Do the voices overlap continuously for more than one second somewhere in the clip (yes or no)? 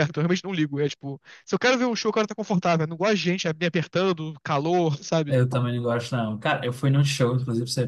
no